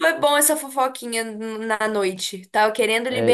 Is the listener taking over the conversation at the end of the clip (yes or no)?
yes